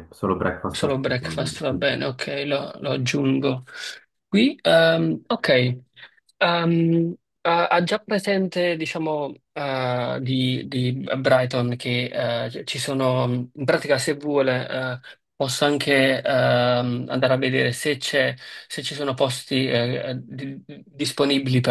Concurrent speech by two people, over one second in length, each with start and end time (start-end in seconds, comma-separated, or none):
0.7-2.1